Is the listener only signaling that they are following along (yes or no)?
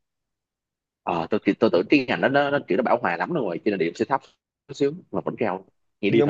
no